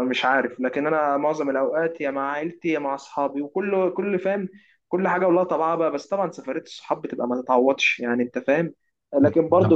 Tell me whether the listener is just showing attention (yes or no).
yes